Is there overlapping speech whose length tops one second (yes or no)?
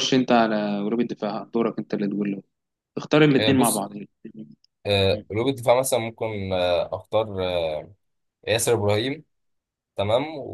no